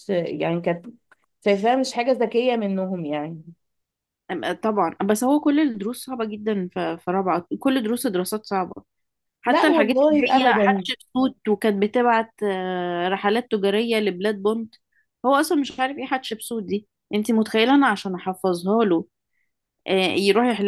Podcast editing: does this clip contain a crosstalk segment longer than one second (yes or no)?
yes